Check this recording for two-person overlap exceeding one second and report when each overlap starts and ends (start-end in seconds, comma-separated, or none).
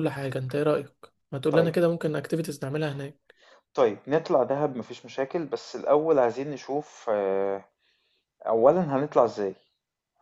none